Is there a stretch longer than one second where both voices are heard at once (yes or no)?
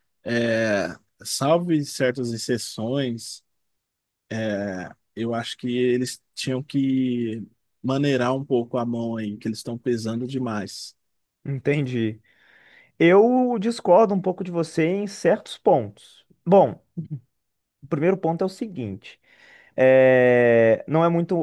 no